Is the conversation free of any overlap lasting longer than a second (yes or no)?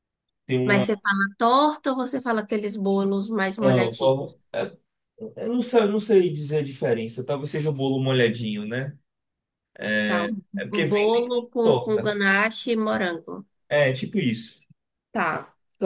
no